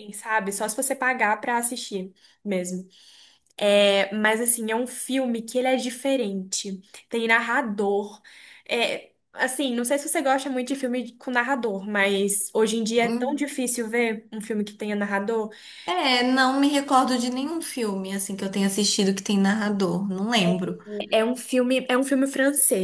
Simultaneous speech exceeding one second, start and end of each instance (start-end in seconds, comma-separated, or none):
none